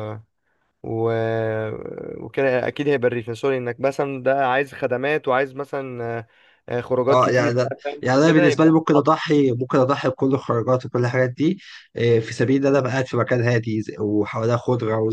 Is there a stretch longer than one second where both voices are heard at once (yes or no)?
yes